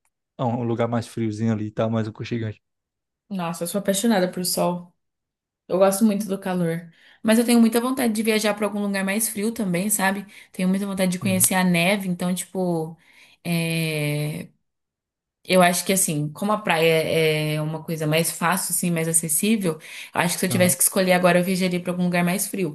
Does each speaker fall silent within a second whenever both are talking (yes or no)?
yes